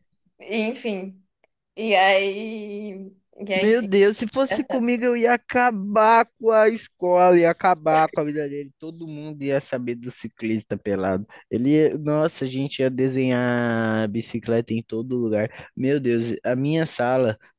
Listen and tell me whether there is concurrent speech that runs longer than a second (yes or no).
no